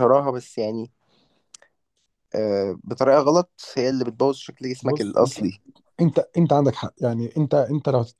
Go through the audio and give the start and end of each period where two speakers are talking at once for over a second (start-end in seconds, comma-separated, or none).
none